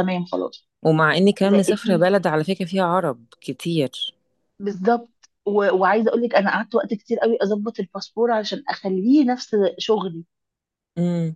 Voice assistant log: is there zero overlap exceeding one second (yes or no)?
yes